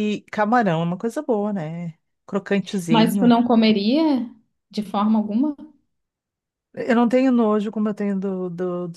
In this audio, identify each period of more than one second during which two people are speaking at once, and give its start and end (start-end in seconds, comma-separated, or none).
none